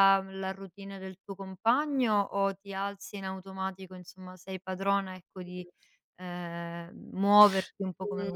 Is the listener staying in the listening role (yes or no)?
no